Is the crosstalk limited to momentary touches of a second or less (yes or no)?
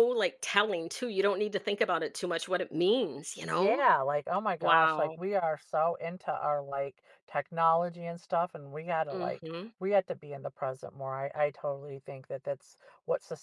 yes